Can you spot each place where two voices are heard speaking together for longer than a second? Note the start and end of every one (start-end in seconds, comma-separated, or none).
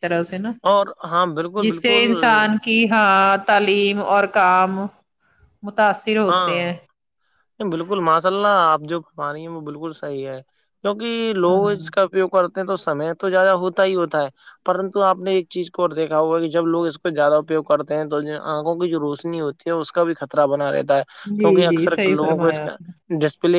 21.2-22.8